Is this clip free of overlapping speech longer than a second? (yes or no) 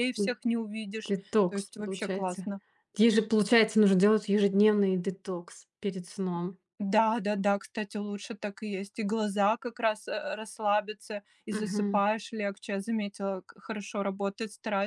no